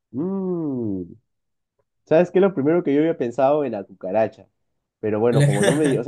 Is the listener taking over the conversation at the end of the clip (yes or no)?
no